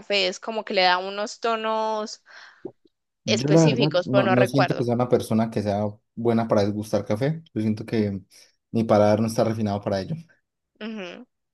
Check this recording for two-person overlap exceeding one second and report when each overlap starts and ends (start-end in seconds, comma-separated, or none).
3.2-4.9